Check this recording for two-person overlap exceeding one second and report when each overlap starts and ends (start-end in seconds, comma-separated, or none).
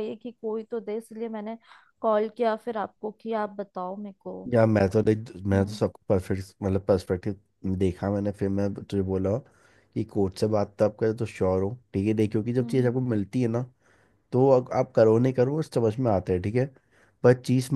none